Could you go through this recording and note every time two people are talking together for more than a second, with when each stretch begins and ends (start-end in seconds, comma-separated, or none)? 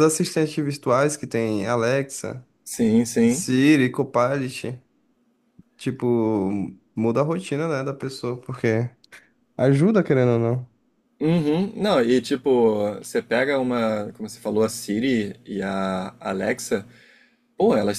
none